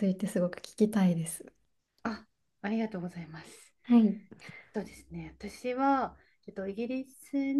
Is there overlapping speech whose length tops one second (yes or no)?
no